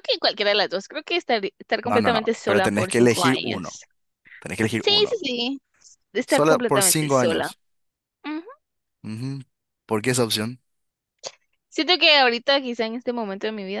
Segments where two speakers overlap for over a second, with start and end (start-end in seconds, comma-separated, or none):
1.8-3.8, 6.3-7.5